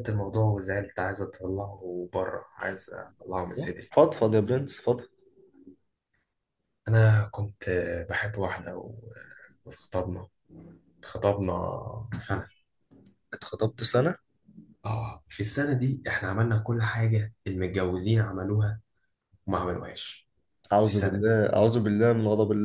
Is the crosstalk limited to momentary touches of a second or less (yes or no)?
yes